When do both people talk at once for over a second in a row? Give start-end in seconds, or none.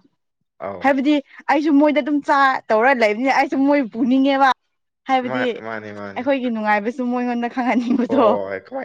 none